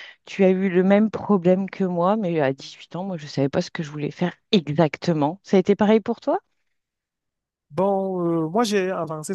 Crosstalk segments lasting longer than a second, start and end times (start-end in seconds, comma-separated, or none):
none